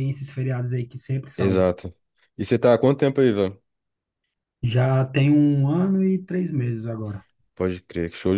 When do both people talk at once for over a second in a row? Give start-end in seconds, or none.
none